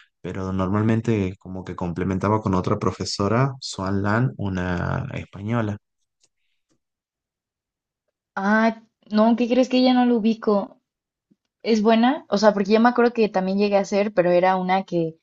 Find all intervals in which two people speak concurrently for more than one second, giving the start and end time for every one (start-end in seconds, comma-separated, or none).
none